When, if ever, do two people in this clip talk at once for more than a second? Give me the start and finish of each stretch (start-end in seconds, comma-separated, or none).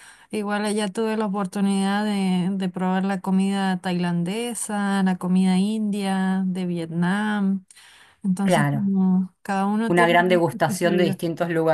9.9-11.2